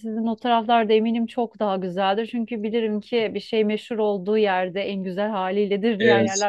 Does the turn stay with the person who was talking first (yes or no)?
yes